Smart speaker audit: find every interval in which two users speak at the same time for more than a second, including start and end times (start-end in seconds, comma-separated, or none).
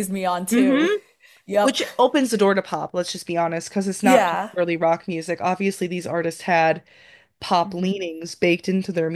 none